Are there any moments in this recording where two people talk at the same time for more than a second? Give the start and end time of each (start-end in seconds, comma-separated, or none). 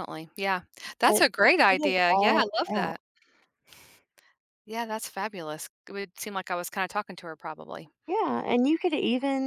1.0-3.0